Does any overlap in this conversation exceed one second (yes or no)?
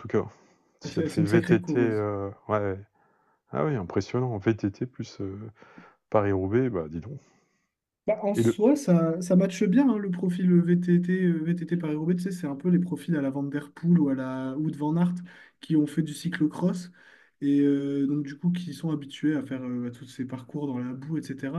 yes